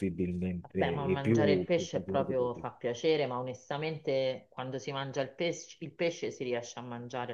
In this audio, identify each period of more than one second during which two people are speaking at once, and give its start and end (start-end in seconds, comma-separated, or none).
0.6-2.7